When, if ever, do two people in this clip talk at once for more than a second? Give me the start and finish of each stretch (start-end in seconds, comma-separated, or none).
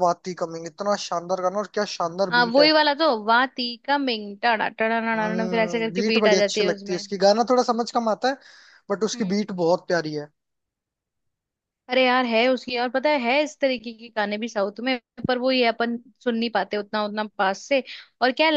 5.3-7.0